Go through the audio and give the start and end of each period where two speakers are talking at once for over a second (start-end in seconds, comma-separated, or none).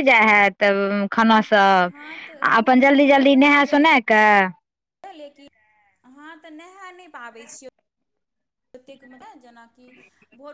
1.9-4.1